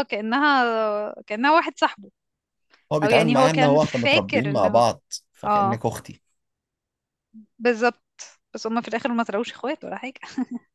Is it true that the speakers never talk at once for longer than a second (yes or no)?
no